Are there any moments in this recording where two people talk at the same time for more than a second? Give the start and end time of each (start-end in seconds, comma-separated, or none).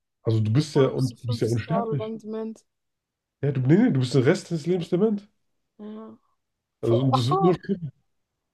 0.5-2.1